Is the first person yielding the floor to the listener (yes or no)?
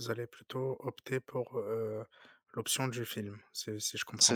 yes